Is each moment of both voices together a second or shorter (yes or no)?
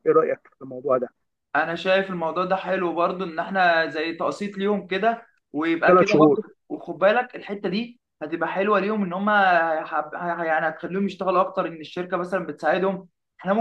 yes